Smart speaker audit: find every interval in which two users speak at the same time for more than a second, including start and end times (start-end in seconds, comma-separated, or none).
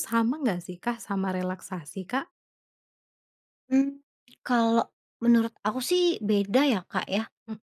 none